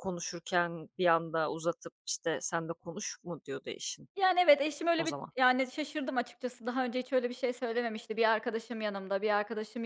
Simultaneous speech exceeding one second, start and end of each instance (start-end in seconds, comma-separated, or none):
none